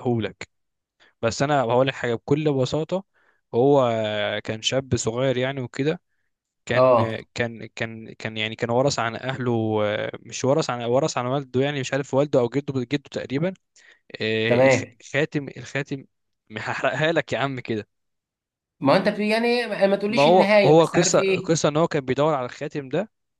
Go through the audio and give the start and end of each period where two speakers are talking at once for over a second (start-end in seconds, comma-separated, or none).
20.1-21.6